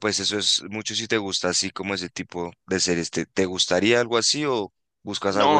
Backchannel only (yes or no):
no